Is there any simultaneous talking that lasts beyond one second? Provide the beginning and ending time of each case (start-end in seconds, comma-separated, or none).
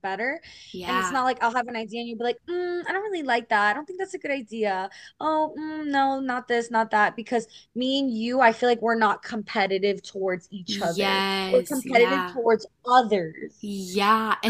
10.7-12.4